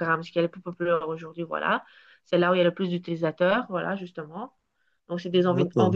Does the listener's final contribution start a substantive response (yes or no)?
no